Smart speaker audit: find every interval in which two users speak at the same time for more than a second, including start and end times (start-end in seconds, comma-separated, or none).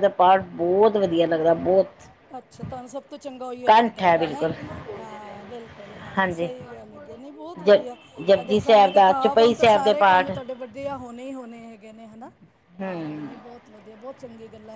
8.4-10.3